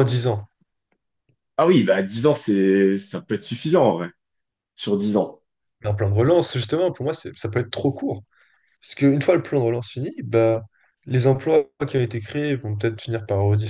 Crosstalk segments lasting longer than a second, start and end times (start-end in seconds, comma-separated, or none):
none